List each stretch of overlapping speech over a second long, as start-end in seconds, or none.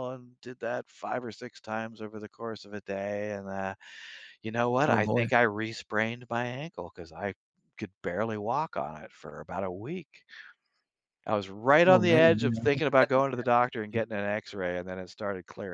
11.9-13.1